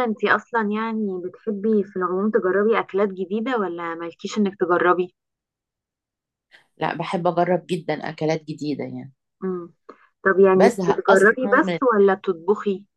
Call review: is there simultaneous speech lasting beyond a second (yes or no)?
yes